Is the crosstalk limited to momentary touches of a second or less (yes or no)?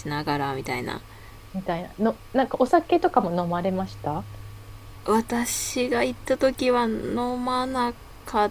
yes